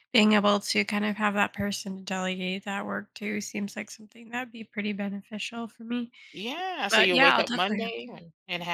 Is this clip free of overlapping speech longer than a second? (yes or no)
no